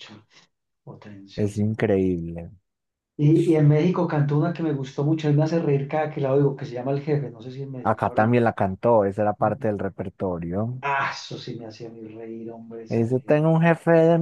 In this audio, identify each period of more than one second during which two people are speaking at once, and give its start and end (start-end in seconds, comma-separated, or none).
none